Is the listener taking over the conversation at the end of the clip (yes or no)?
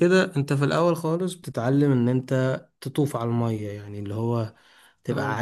no